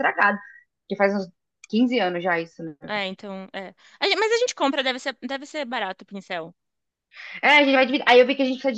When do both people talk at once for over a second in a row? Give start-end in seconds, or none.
none